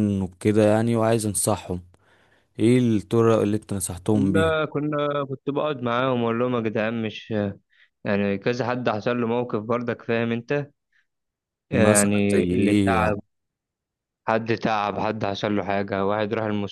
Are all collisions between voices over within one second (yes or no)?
no